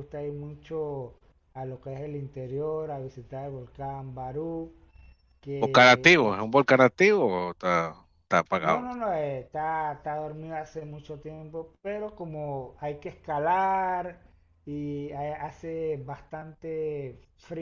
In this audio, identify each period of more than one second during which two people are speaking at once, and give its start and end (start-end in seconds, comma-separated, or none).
none